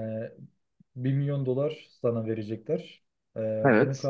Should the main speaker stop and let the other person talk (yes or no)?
no